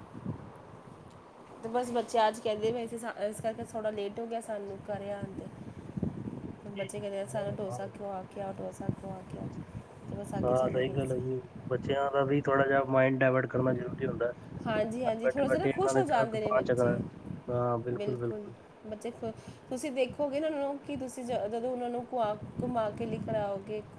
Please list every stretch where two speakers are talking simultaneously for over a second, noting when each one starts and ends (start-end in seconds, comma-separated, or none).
15.1-16.9